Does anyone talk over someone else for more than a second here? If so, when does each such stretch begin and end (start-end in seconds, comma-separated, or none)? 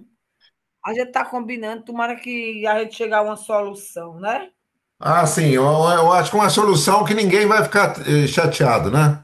none